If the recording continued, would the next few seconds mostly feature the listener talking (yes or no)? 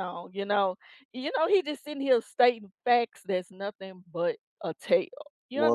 yes